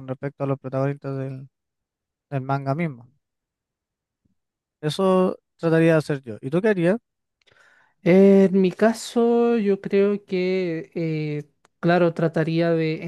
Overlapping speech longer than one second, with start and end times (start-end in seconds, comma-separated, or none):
none